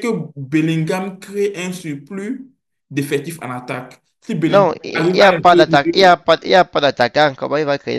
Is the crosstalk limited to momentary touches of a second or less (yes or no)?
no